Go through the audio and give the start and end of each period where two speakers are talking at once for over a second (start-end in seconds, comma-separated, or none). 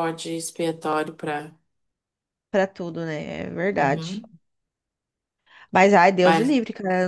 none